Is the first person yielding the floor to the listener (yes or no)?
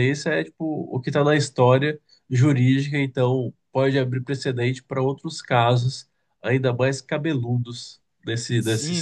yes